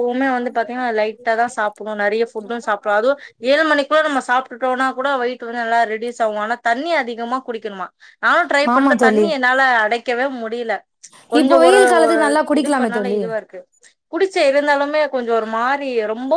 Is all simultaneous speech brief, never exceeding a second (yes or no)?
yes